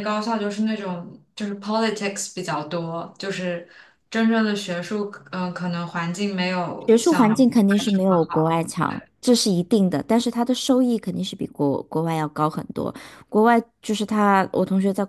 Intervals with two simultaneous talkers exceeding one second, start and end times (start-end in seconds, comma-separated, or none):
6.9-8.6